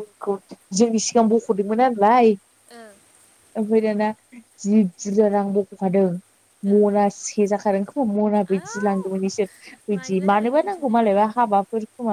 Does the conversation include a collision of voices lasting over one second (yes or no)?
yes